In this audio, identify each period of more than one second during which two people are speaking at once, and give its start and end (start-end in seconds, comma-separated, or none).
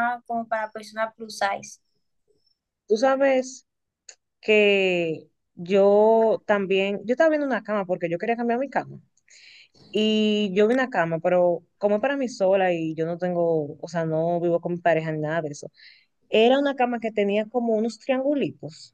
none